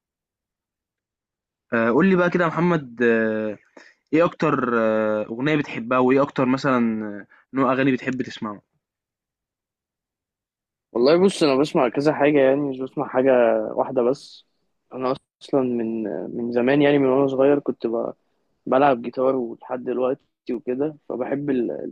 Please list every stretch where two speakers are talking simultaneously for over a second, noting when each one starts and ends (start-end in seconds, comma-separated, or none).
none